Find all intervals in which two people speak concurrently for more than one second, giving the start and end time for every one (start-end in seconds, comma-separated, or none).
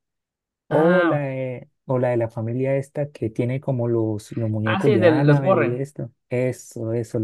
4.6-5.8